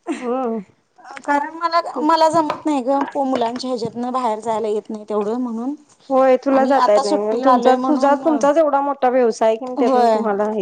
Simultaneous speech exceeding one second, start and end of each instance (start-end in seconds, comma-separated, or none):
6.6-8.2